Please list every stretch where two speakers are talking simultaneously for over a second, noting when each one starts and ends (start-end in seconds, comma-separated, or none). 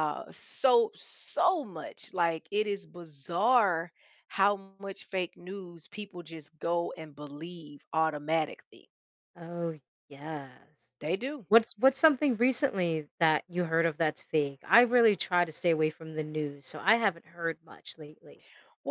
none